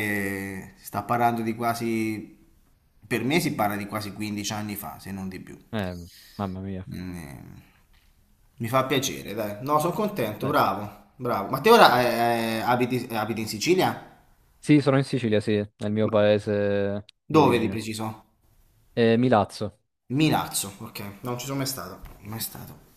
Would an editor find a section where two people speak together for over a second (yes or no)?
no